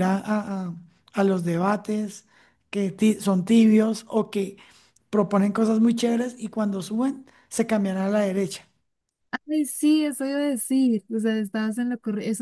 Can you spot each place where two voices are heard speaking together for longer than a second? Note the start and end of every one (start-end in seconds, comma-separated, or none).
none